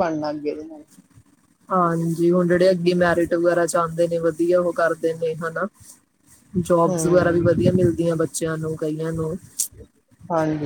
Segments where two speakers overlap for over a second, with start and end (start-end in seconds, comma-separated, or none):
none